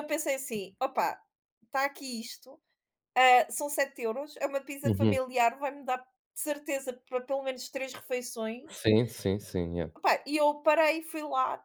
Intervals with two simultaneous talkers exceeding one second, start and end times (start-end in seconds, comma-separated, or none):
none